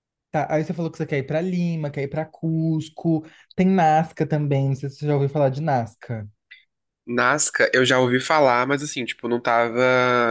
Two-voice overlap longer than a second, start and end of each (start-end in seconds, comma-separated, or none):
none